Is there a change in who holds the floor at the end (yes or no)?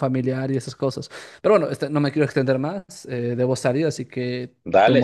yes